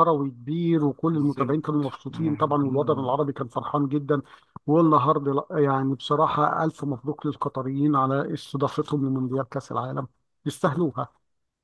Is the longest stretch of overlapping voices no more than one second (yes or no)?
no